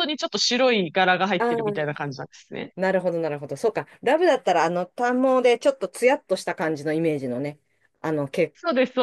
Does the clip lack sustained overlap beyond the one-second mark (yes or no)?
yes